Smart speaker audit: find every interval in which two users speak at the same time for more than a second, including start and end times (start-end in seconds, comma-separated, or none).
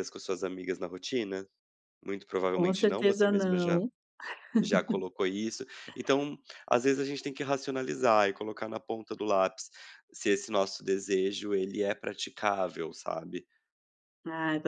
2.5-3.8